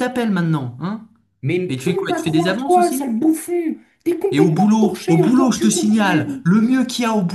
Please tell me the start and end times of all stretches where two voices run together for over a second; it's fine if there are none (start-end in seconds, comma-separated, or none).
1.7-3.1, 4.3-6.4